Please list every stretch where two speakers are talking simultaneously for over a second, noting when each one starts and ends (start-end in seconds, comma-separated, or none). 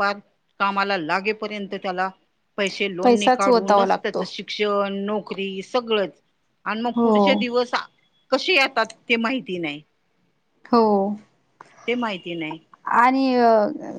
3.0-4.2